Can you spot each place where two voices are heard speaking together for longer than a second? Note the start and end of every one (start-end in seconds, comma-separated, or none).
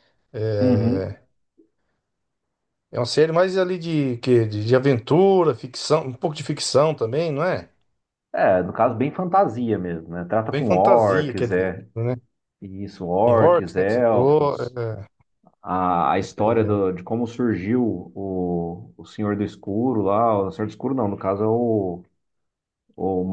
10.5-11.9, 13.2-14.6